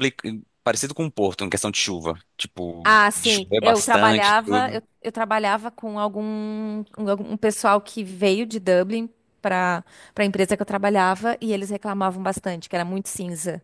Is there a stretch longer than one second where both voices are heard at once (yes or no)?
yes